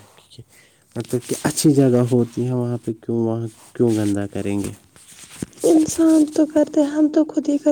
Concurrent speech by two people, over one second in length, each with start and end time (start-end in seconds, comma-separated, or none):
none